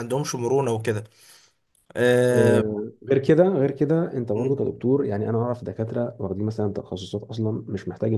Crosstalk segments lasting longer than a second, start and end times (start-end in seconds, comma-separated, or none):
none